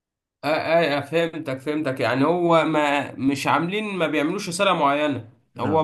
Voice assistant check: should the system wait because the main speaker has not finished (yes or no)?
yes